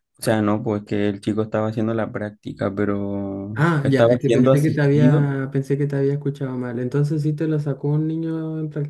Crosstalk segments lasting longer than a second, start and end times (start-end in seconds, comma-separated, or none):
3.6-5.3